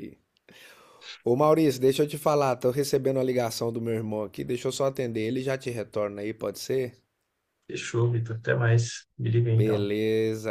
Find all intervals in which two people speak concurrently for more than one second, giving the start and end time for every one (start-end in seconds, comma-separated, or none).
none